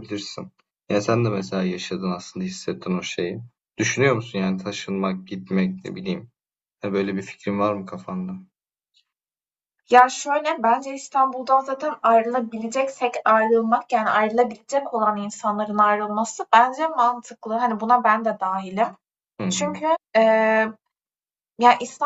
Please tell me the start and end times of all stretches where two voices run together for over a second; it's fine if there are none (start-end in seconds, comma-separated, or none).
none